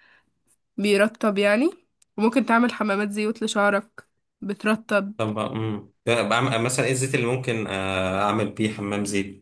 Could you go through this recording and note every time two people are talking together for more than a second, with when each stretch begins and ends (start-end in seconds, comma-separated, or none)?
none